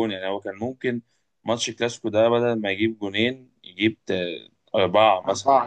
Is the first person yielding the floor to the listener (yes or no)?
yes